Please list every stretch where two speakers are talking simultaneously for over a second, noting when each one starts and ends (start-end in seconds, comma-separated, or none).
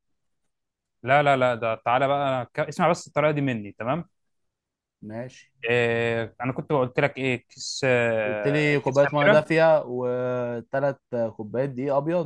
8.2-9.4